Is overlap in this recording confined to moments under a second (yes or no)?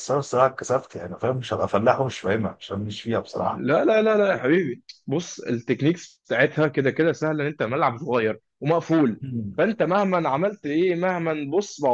yes